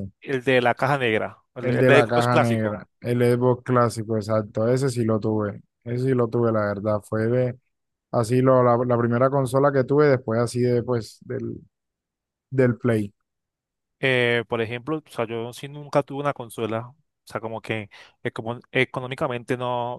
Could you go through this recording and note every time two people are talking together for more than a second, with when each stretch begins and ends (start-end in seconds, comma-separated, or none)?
1.6-2.8